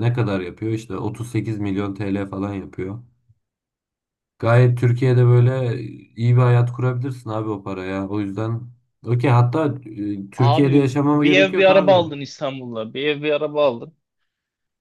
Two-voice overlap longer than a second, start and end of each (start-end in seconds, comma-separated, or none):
10.4-12.1